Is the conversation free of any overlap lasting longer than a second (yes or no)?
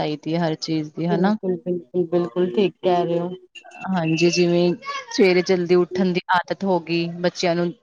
yes